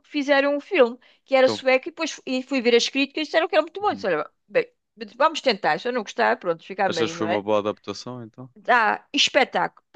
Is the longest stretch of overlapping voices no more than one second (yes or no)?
yes